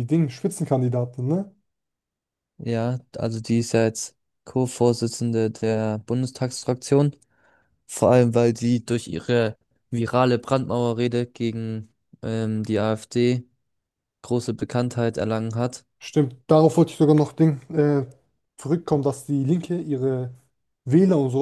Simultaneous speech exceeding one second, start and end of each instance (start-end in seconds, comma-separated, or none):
none